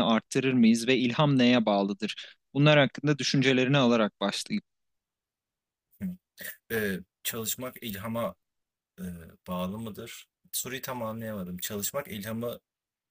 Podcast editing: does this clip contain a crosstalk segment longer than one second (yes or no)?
no